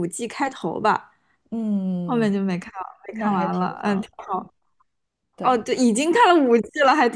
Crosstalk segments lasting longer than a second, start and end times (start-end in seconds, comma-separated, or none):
3.1-4.5